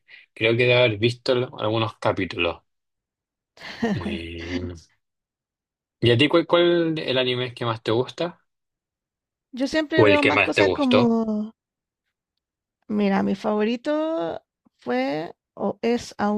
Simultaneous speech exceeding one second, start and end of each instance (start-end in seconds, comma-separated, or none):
9.9-11.2